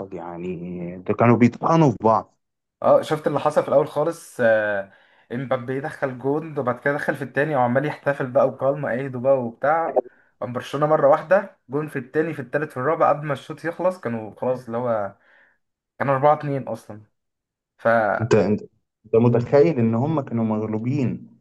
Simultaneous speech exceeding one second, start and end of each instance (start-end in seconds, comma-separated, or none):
none